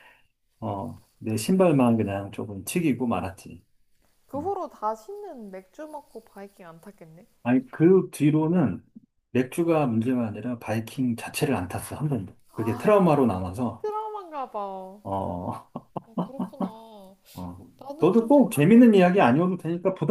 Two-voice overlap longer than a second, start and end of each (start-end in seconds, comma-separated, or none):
18.0-19.3